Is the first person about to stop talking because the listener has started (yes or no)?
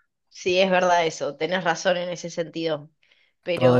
yes